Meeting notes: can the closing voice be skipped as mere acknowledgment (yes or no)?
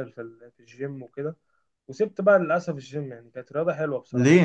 no